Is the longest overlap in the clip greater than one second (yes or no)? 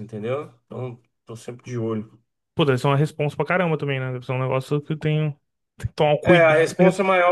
no